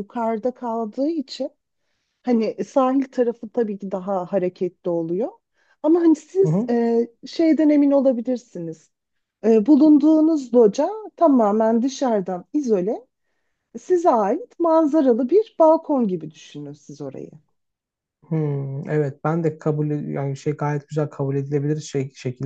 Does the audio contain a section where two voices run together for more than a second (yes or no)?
no